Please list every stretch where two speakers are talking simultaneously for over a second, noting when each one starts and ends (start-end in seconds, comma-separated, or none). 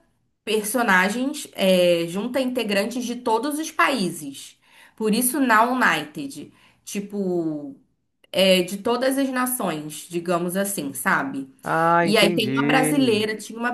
12.0-13.2